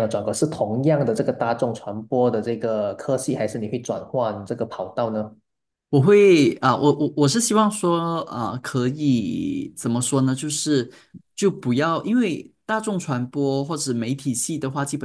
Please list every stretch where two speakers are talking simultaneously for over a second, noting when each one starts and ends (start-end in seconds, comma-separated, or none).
none